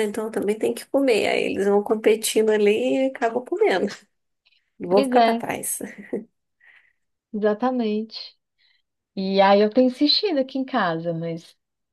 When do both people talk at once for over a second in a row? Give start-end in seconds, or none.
none